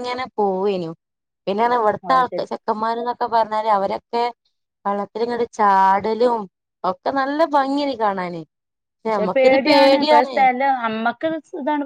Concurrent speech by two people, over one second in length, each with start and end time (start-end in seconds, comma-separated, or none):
none